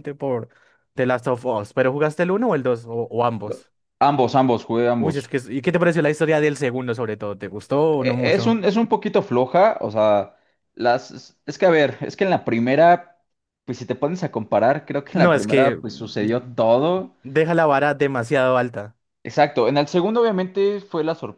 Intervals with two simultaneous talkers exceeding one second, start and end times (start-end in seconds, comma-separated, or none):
15.1-16.6